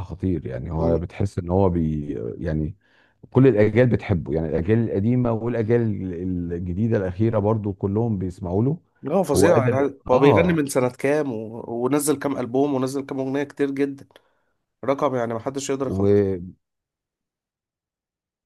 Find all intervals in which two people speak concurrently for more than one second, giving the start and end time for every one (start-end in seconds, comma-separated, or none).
9.3-10.6